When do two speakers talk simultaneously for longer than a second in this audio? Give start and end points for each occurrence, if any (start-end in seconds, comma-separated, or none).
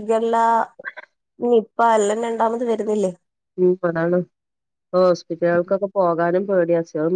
none